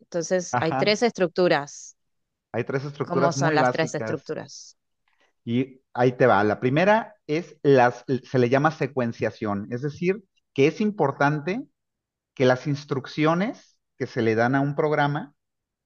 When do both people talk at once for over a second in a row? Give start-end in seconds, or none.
3.0-4.3